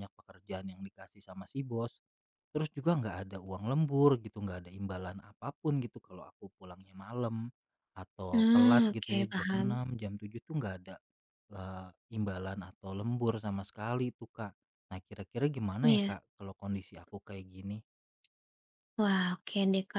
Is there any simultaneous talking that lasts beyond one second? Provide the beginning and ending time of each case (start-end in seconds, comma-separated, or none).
8.3-9.7